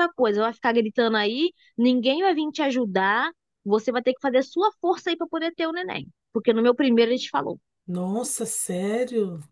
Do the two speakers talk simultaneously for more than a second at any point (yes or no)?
no